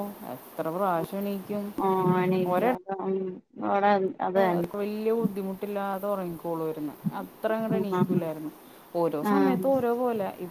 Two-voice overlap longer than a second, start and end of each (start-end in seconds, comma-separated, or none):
none